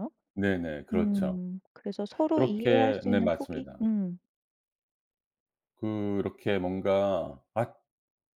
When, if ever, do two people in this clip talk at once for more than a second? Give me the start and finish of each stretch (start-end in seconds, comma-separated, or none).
2.4-3.8